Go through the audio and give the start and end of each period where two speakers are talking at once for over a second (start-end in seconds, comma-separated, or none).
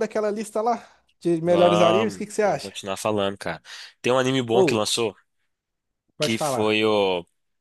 1.4-2.7